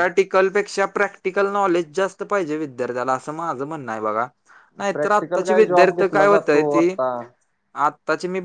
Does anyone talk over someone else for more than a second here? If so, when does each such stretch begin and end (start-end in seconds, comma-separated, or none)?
4.9-6.9